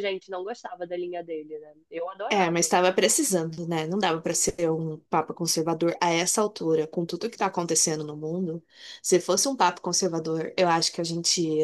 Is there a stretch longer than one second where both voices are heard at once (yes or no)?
no